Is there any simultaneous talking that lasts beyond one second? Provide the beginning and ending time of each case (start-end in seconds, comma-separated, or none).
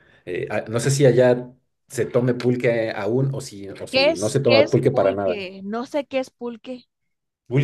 3.9-5.4